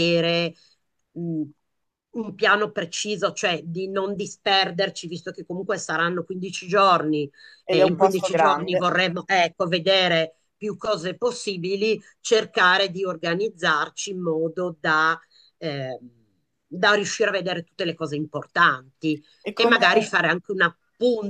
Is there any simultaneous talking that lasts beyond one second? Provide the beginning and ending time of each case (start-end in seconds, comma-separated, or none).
7.7-8.9